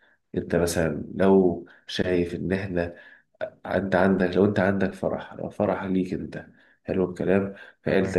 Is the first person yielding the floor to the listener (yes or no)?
no